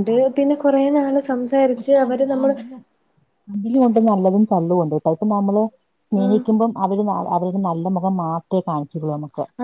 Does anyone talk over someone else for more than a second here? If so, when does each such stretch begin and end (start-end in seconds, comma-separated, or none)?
none